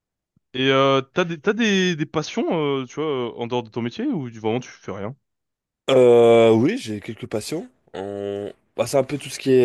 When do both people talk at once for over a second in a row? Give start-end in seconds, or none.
none